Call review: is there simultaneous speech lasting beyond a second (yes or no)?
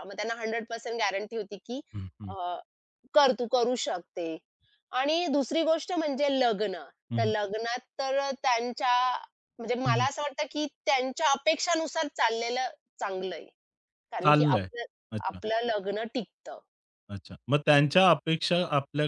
no